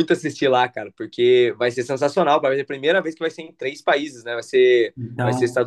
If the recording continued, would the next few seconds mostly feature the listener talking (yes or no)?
no